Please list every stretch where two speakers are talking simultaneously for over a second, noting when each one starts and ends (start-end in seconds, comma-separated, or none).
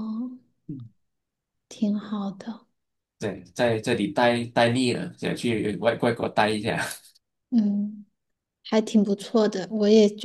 none